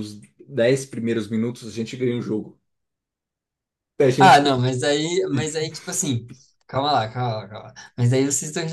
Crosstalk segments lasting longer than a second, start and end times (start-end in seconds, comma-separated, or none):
none